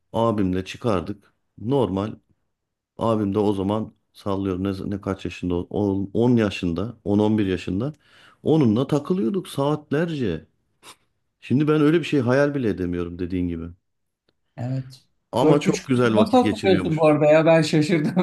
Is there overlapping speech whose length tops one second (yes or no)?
yes